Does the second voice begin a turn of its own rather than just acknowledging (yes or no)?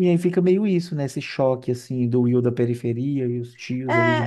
yes